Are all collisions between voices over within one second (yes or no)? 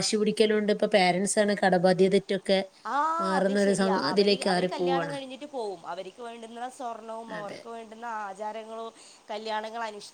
yes